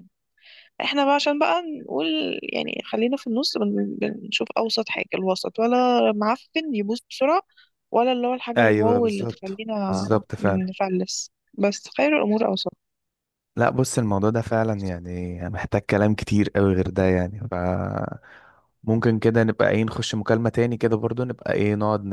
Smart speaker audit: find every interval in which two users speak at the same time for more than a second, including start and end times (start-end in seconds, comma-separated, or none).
8.6-10.7